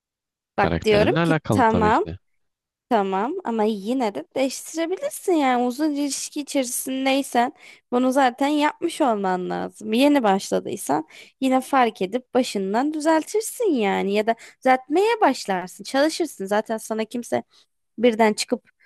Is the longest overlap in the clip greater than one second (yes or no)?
yes